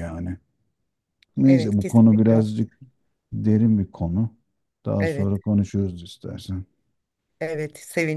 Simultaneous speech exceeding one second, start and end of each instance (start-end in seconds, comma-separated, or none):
1.4-2.7